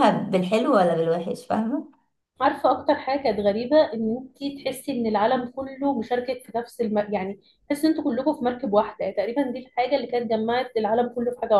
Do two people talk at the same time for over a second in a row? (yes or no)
no